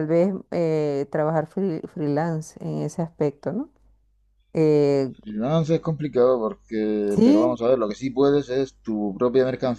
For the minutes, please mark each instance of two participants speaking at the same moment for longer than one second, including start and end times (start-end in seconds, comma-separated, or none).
none